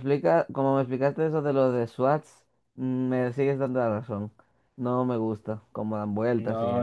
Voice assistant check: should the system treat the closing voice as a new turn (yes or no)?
yes